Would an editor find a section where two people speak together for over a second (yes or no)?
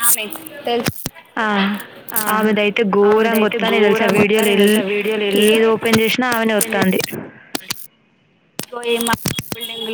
yes